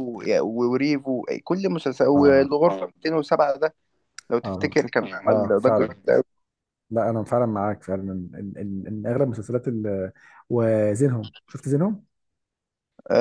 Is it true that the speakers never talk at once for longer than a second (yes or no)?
no